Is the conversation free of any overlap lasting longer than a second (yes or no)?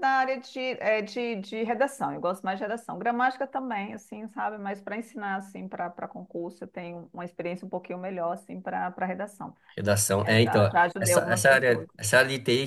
no